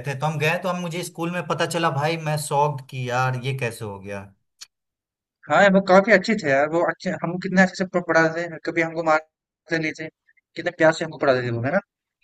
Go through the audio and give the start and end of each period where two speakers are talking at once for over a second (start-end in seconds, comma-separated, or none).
none